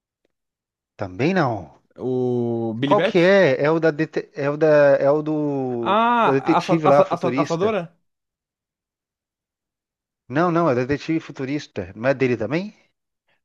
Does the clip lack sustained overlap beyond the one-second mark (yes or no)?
no